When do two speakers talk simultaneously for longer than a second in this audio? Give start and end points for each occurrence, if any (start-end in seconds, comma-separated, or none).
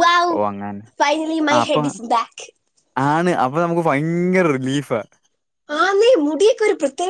none